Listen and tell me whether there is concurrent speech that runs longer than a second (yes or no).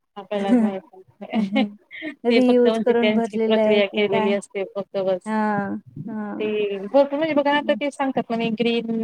yes